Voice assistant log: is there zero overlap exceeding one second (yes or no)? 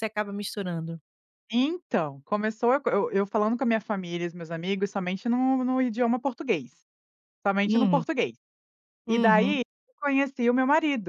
yes